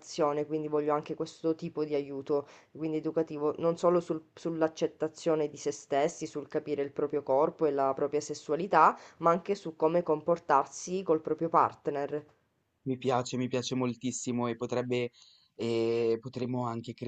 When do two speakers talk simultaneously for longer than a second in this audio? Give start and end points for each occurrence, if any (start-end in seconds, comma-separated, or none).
none